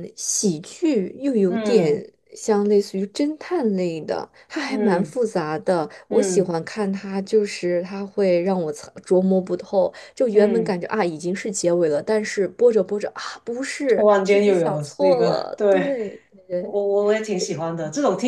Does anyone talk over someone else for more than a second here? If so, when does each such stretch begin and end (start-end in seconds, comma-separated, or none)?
13.9-16.0